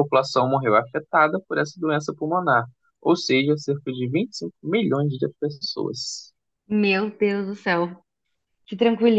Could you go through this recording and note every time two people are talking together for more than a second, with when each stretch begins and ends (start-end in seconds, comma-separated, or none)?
none